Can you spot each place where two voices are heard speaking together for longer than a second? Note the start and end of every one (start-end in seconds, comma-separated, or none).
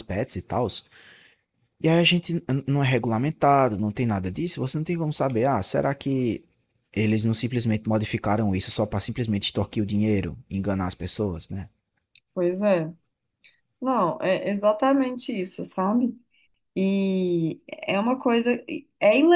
none